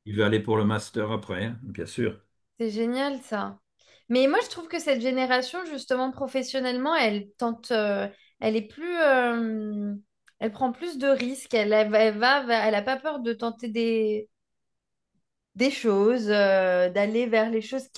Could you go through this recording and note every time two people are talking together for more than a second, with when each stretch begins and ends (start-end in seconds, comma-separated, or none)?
none